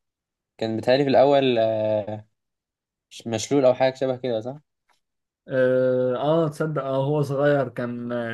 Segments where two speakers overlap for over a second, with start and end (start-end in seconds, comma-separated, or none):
none